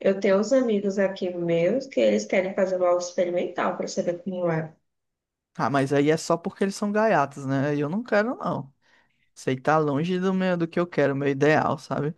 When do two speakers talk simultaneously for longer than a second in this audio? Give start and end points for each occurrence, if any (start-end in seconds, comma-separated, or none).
none